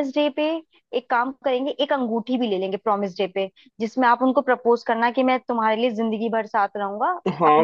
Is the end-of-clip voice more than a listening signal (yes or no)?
yes